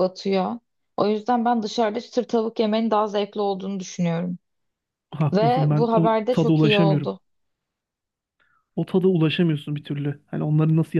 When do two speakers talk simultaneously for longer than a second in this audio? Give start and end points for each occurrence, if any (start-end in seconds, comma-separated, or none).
5.3-7.1